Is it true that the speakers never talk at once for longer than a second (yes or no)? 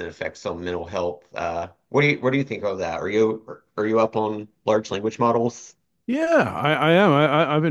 yes